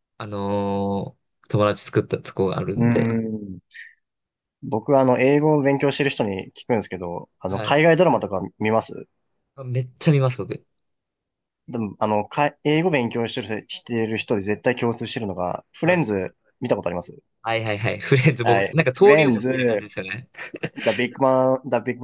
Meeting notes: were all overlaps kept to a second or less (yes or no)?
no